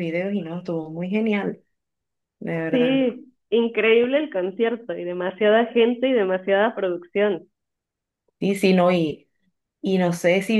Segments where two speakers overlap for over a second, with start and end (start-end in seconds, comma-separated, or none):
none